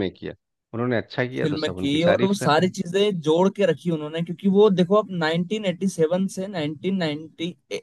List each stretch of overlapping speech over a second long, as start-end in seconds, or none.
1.4-2.7